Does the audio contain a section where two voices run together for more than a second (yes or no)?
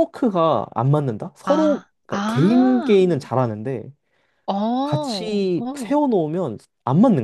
yes